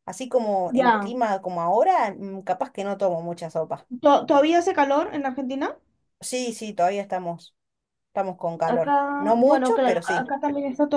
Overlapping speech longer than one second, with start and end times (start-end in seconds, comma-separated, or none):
8.7-10.3